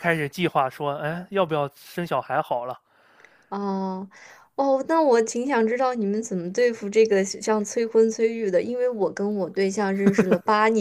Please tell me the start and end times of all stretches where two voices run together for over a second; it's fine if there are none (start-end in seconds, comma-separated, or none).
none